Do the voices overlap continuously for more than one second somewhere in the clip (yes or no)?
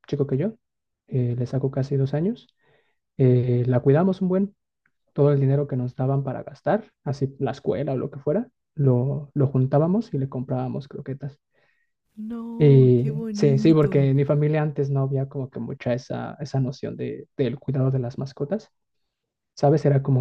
yes